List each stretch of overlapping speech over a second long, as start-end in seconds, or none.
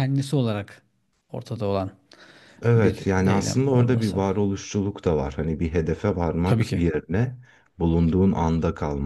2.8-4.2